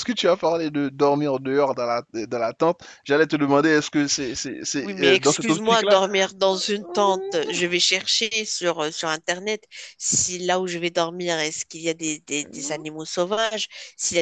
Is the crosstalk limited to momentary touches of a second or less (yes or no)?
no